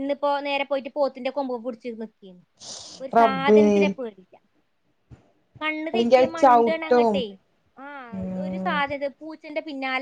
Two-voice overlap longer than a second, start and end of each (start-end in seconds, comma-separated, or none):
none